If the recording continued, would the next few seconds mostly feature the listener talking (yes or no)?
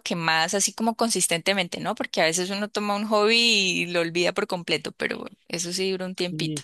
yes